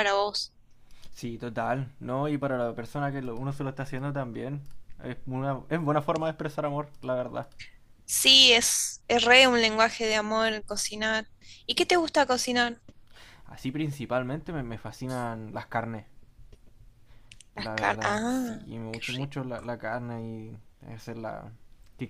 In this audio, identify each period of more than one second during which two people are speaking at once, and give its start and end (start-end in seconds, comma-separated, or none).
17.6-19.3